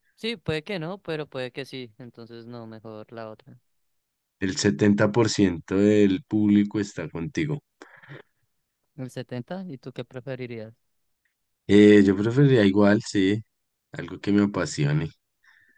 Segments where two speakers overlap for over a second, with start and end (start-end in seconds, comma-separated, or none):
none